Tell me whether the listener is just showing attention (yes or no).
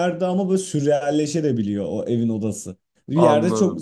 yes